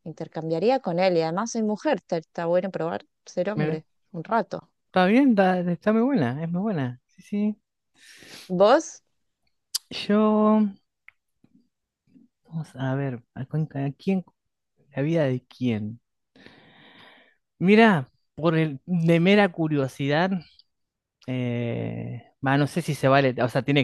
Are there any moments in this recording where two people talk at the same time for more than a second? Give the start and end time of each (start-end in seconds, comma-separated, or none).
none